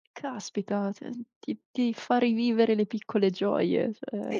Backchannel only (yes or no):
no